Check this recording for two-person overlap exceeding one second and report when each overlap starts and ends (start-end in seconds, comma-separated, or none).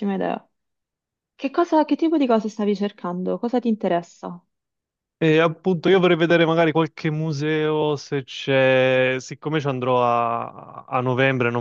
none